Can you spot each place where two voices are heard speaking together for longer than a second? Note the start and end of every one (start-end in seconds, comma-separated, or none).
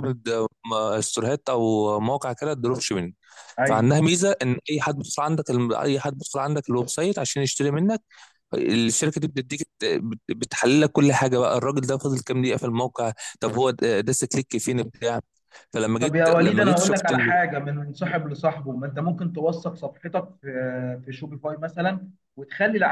16.0-17.4